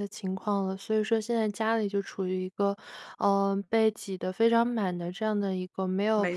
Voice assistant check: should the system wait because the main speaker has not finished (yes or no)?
yes